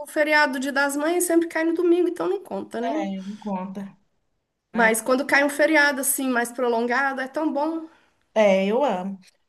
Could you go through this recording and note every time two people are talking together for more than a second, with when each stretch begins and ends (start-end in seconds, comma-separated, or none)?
none